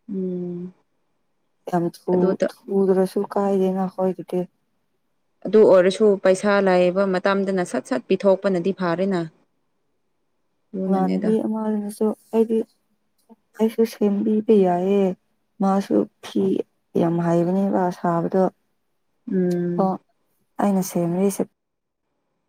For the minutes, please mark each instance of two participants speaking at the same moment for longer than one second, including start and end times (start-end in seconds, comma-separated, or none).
none